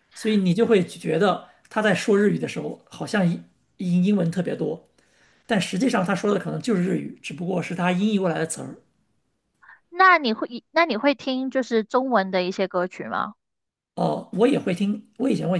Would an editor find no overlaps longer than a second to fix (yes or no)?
yes